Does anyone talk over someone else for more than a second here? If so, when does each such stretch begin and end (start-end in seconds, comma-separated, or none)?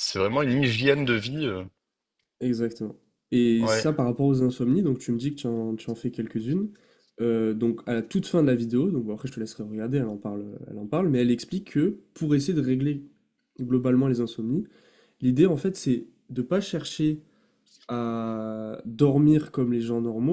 none